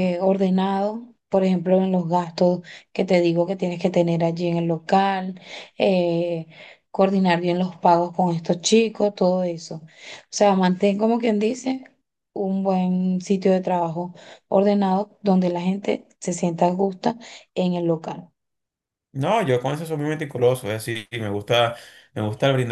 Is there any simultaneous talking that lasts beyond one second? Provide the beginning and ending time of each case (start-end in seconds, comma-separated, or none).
none